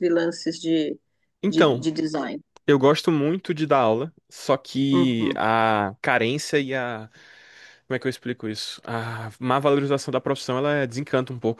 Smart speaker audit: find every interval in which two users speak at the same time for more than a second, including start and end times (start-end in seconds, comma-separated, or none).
none